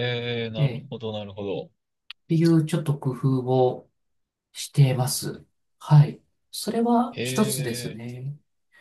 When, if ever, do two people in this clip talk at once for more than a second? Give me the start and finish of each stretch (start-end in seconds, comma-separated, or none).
none